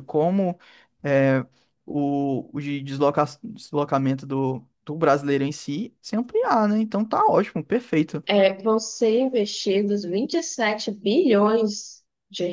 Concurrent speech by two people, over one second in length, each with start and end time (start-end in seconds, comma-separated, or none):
none